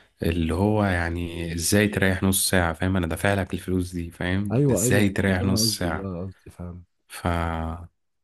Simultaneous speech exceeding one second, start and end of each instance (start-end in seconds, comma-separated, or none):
4.5-6.1